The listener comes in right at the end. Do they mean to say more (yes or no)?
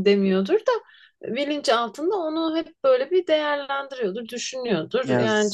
no